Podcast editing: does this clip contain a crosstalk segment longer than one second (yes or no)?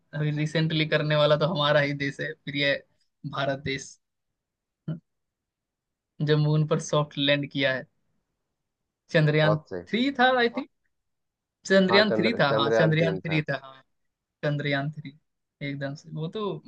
yes